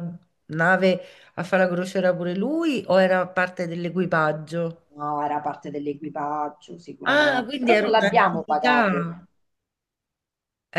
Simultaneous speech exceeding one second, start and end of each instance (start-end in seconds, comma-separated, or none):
7.0-9.1